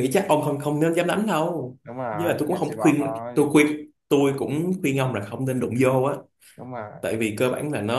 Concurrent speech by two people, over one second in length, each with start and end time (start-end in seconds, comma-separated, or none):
1.8-3.5